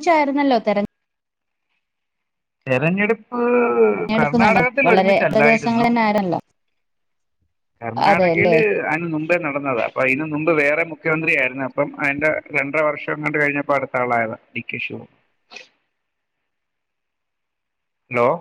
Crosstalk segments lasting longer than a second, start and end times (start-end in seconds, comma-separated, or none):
3.9-5.8